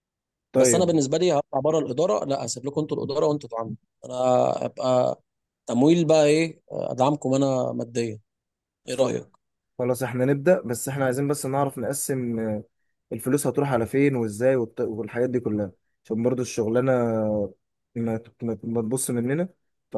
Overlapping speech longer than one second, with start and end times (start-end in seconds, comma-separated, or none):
none